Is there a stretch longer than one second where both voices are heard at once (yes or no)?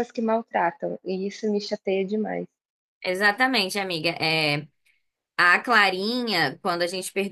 no